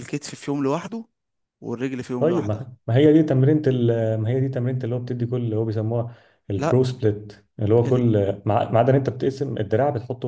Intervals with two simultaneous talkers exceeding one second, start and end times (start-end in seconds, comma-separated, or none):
none